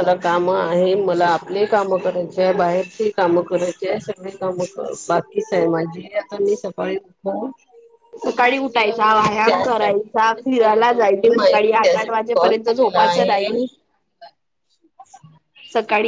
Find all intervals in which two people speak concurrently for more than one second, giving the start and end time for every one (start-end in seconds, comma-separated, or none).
8.6-13.6